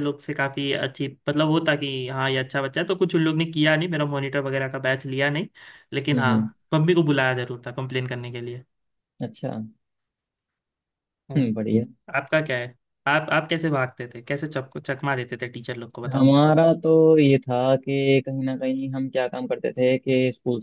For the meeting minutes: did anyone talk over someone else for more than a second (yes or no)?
no